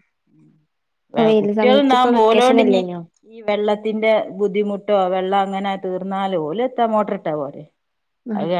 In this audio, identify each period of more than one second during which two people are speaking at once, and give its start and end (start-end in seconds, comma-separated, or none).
1.4-2.8